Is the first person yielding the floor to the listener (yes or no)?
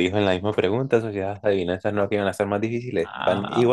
yes